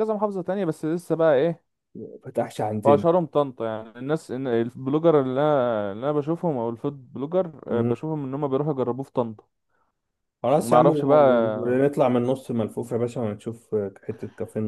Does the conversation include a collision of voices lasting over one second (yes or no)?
yes